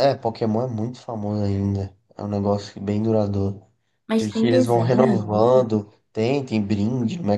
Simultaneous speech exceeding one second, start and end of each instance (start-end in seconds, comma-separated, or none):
4.2-5.7